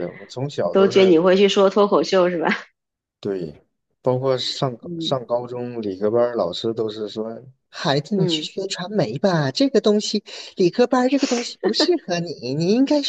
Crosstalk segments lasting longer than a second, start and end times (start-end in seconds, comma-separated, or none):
none